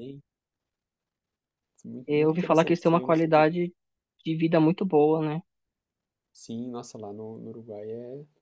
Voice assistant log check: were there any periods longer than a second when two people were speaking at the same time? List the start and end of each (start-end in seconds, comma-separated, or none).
2.0-3.5